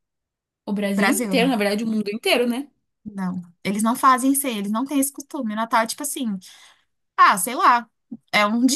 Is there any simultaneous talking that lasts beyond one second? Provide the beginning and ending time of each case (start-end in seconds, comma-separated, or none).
none